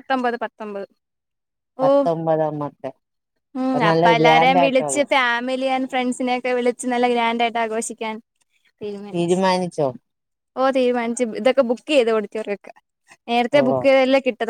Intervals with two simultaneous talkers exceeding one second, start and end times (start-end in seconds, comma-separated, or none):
3.6-5.0